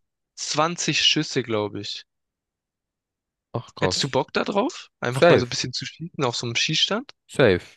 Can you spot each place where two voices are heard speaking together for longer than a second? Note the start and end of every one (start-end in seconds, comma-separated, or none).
none